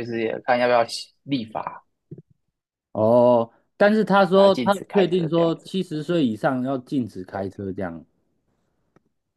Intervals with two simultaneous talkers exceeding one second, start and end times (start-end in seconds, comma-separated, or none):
4.3-5.7